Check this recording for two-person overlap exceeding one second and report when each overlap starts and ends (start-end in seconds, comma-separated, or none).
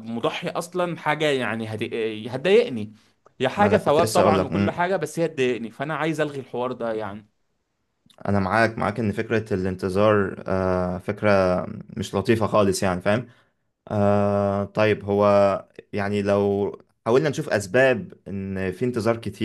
3.6-4.8